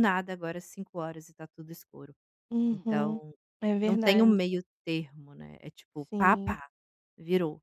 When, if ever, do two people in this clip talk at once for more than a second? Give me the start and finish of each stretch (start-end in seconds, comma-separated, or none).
none